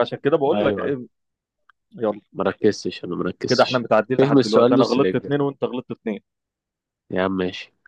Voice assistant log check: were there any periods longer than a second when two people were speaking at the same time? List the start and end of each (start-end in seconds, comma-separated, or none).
3.5-5.4